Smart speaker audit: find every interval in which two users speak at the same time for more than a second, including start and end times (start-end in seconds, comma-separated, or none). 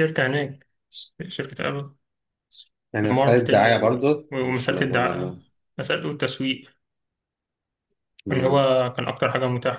3.0-5.3